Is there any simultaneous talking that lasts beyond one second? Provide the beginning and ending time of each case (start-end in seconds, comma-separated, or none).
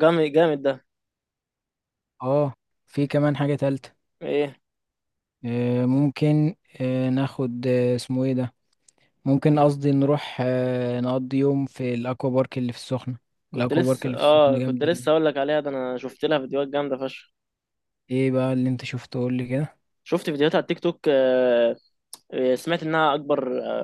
13.5-15.1